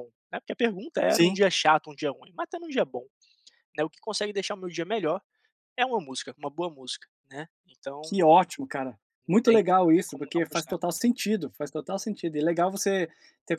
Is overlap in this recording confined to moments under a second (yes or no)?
no